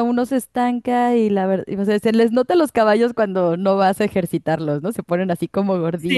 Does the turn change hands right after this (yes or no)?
yes